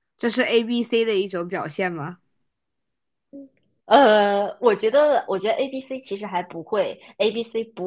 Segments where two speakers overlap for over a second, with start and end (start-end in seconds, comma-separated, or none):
none